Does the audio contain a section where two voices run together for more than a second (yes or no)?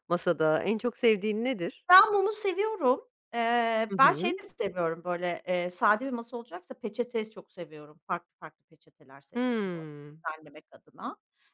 no